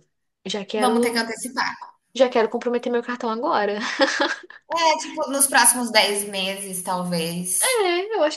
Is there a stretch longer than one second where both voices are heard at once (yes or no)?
no